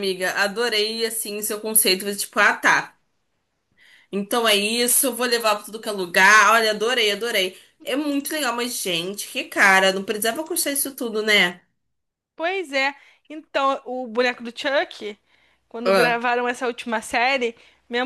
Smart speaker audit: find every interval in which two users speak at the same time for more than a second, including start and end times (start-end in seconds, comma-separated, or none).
none